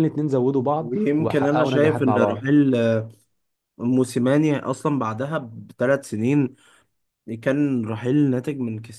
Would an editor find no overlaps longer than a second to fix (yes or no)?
no